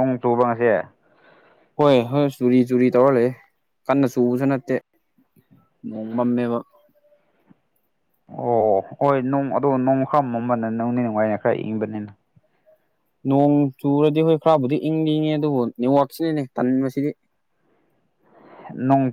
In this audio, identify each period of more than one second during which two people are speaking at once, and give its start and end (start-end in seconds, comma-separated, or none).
none